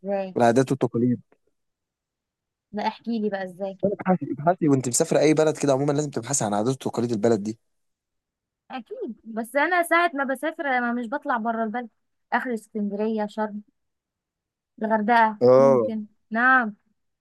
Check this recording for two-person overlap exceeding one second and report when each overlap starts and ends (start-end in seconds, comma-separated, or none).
none